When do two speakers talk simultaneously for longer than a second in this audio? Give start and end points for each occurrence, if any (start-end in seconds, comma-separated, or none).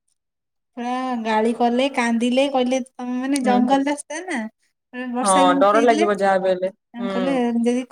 5.2-7.4